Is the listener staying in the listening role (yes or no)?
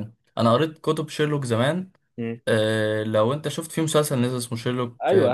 no